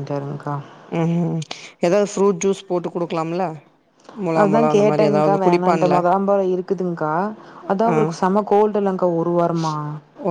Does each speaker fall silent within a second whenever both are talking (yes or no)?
no